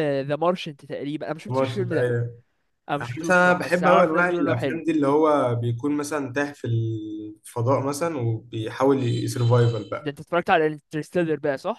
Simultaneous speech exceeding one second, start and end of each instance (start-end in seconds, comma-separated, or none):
3.0-4.8